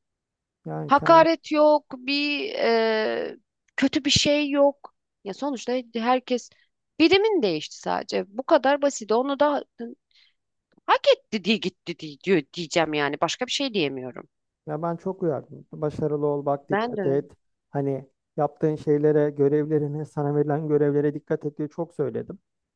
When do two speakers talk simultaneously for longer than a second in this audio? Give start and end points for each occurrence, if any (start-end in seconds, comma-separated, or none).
none